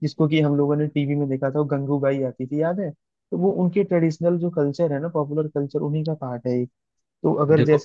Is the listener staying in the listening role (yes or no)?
yes